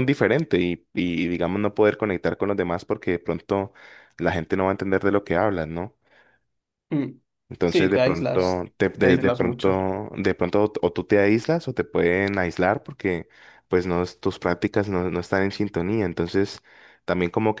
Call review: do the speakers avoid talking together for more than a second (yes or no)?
no